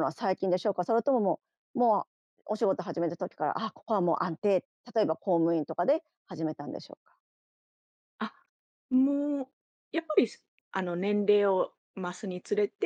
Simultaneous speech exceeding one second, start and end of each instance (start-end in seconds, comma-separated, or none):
none